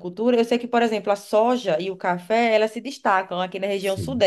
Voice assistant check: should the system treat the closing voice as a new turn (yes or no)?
no